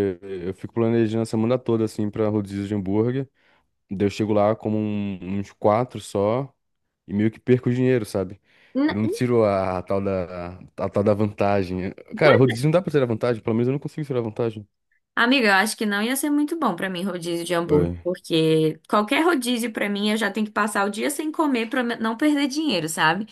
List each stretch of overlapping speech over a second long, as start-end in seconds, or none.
none